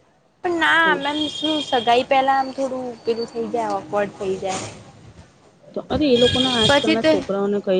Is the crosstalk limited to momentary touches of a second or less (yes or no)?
yes